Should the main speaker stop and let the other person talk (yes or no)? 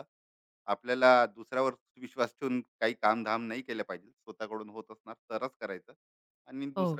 no